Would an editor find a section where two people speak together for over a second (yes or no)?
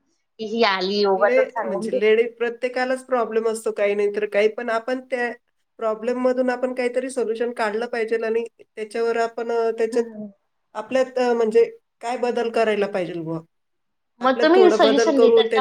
no